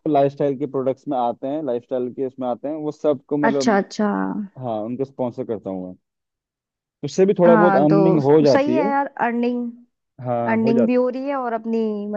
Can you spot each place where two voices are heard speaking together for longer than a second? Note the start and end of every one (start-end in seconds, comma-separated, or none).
7.5-8.9